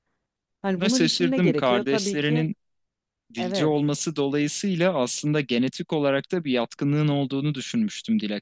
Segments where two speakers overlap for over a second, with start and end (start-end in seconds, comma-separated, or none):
0.7-2.5